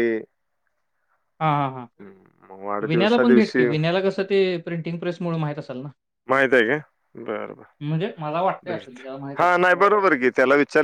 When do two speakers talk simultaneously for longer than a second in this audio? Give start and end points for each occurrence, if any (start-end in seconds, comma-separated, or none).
2.0-3.7